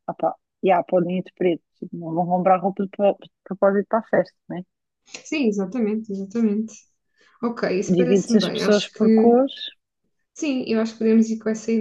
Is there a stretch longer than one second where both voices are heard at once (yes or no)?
yes